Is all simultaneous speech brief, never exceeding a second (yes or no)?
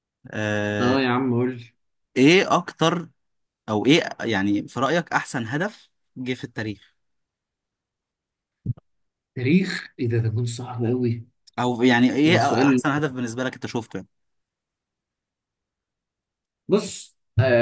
yes